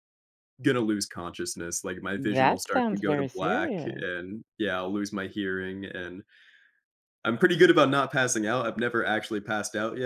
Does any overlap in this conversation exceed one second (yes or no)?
yes